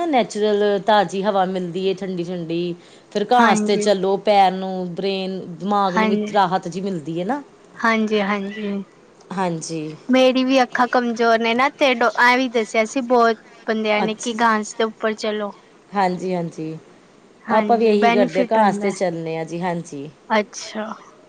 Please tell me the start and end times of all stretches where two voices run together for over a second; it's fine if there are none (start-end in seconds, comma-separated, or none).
17.6-19.0